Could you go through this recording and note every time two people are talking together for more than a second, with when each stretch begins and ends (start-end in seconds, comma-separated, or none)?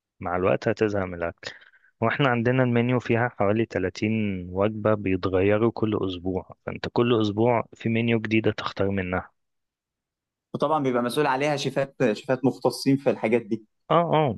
none